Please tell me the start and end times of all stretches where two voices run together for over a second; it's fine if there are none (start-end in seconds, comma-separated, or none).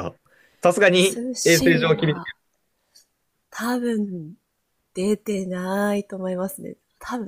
1.0-2.2